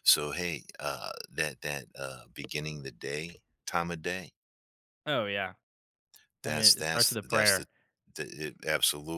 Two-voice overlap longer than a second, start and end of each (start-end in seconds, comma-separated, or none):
6.5-7.7